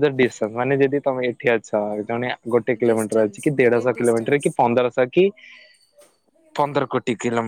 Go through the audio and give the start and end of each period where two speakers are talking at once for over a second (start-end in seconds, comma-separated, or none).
2.9-4.4